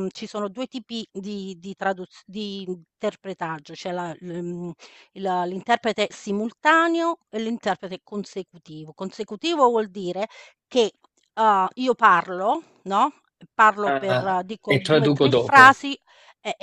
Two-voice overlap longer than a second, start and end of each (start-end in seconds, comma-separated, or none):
13.8-15.7